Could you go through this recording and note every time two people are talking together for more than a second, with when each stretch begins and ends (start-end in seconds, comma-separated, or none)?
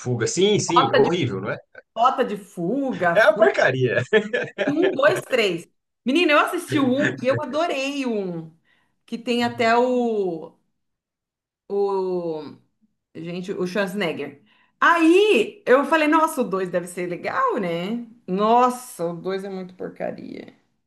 none